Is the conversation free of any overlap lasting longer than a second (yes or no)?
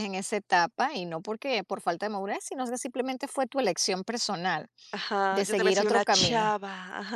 no